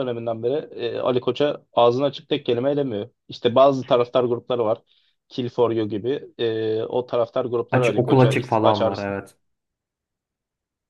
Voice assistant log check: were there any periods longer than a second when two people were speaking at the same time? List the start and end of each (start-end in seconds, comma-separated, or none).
7.7-9.1